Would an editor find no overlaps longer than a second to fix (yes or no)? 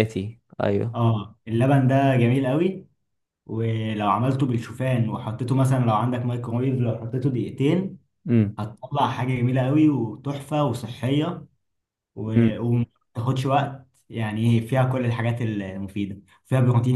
yes